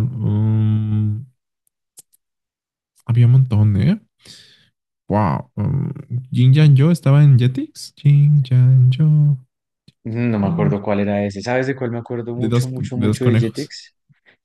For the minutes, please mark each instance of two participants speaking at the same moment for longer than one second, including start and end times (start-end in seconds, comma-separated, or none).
12.3-13.7